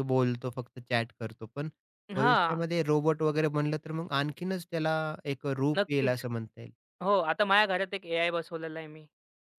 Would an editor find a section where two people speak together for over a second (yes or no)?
no